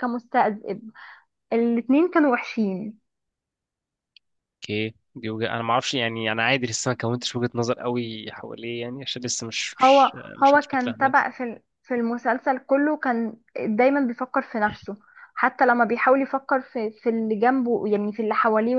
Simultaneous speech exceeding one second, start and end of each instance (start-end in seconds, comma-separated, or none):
9.8-11.1